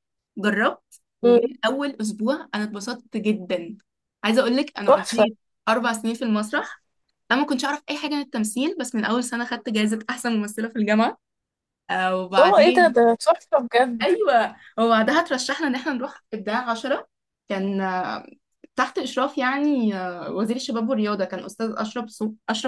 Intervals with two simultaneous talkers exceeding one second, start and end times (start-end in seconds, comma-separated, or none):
none